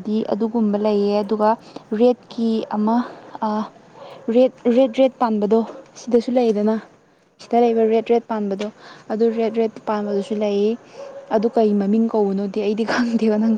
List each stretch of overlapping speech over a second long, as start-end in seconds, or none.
none